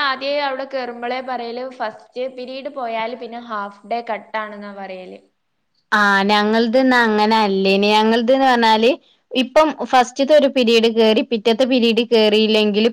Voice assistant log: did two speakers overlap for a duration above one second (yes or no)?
no